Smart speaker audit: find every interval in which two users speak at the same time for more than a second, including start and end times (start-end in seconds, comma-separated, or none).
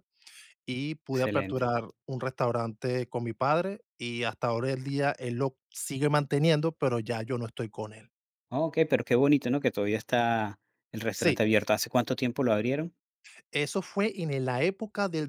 none